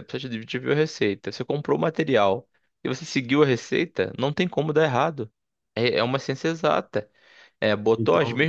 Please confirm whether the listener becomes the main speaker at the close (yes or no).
no